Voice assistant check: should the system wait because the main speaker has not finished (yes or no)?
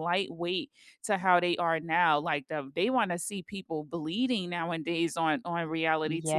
no